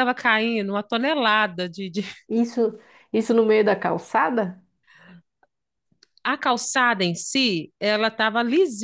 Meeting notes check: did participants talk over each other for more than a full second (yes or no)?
no